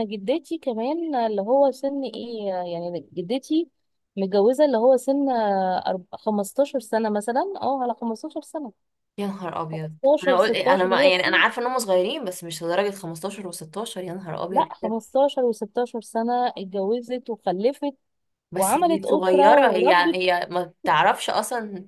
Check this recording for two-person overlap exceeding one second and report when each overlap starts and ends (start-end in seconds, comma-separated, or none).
9.7-11.4, 18.5-20.2